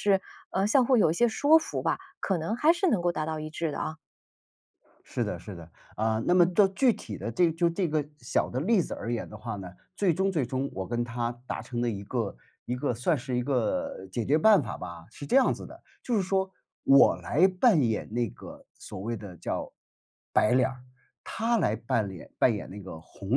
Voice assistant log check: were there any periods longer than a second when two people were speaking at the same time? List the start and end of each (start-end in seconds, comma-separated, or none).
none